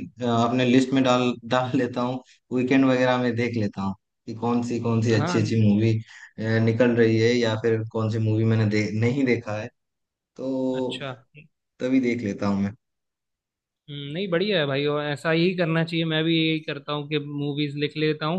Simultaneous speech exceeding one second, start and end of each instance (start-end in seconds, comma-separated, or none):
none